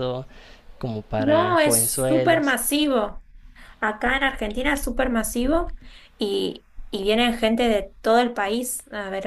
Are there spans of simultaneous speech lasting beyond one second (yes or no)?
yes